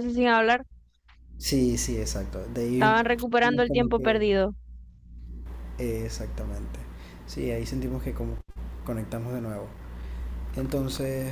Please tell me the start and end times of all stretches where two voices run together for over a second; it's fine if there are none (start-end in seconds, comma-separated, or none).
2.7-4.2